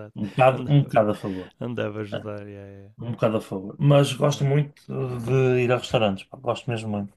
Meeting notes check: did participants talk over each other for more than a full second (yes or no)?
no